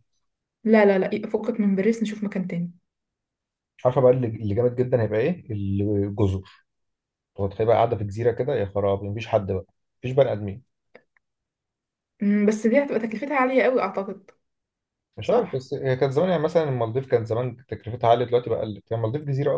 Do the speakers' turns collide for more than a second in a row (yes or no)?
no